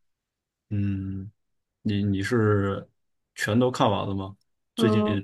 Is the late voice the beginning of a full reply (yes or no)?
yes